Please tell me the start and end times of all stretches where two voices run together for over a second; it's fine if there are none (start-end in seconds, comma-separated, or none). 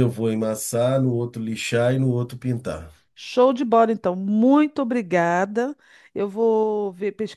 none